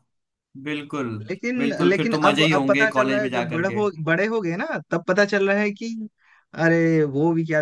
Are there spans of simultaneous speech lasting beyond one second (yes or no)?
yes